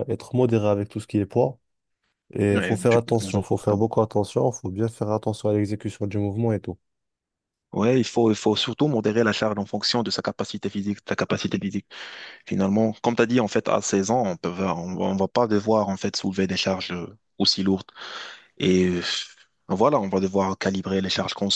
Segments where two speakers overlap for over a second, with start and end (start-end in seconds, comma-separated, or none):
2.5-3.9